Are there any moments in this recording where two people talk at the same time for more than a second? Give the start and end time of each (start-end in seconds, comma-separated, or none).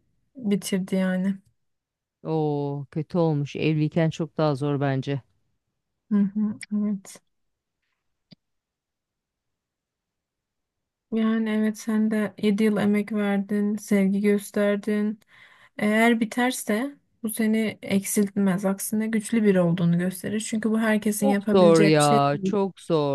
21.2-22.5